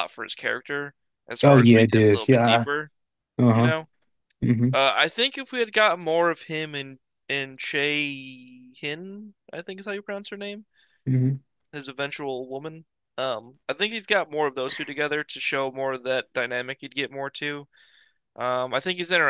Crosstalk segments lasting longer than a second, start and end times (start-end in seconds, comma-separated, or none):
1.4-2.6